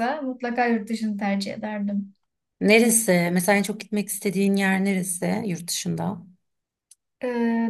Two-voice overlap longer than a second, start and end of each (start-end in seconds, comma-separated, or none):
none